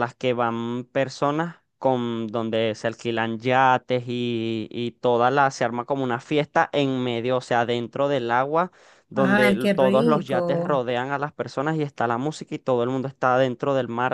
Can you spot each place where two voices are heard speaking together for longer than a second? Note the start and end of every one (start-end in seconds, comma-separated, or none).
9.2-10.8